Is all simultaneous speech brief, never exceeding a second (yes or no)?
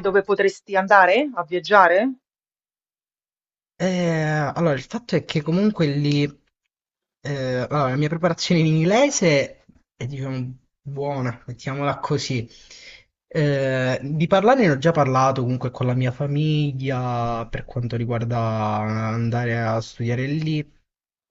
yes